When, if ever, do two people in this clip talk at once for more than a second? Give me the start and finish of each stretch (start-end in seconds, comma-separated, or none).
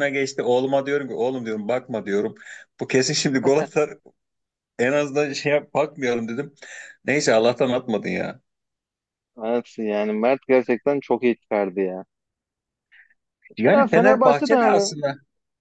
13.7-14.9